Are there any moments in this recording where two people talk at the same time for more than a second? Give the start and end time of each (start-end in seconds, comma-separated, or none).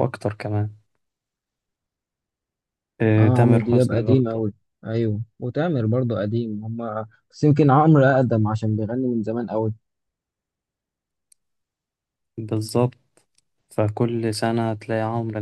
3.2-4.5